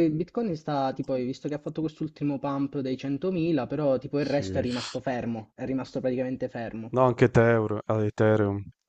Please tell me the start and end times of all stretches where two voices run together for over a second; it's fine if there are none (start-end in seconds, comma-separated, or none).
none